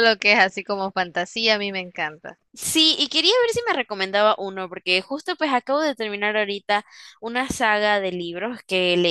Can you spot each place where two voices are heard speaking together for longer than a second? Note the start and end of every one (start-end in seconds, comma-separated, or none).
none